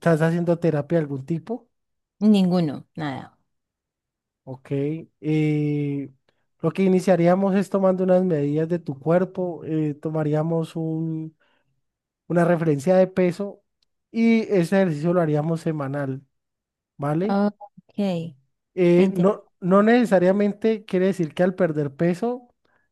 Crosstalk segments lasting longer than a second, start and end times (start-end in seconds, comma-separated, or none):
none